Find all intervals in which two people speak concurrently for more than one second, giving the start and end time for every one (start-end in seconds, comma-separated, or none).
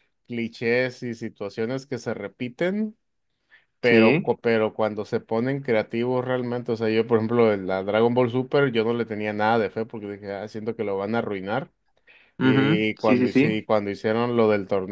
12.4-13.6